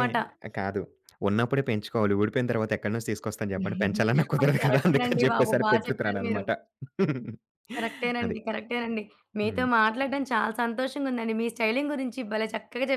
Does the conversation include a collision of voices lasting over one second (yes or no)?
yes